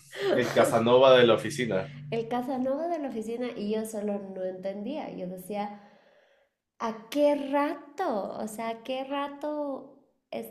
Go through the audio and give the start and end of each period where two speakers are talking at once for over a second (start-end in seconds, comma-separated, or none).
none